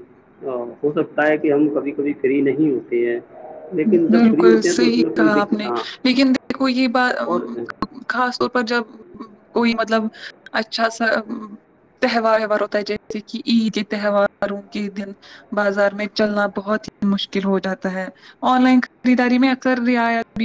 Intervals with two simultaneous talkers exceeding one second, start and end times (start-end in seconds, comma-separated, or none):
4.1-5.8